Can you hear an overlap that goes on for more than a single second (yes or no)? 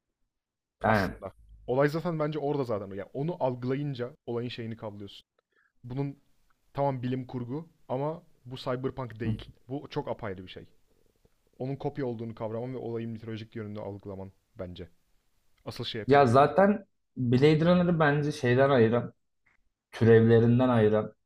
no